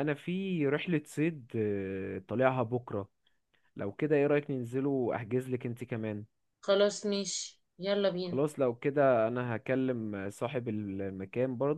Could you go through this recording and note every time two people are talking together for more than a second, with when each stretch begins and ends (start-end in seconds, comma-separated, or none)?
none